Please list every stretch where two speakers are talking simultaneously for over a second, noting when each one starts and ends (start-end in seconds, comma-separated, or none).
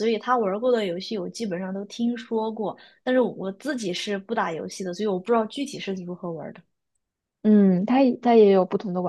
none